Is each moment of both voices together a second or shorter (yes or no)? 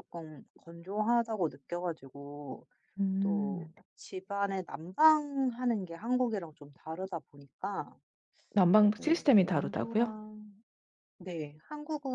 no